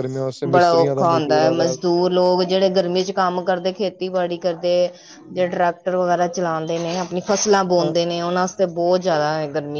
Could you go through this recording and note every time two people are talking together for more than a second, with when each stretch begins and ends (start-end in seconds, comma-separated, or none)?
0.5-1.8